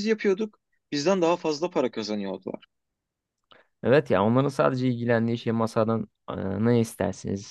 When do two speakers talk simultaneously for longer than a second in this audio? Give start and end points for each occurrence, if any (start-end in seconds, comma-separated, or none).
none